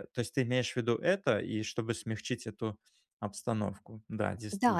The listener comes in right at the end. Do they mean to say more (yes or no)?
yes